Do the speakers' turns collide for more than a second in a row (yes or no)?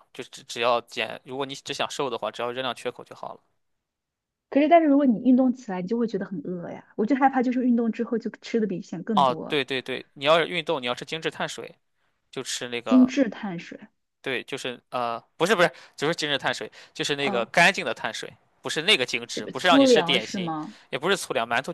yes